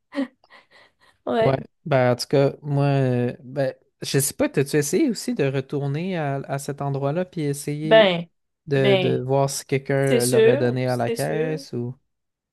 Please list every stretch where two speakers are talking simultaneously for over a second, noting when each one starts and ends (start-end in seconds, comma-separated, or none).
10.1-11.6